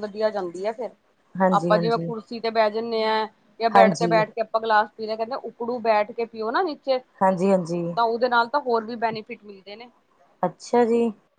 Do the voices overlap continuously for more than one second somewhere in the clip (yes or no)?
no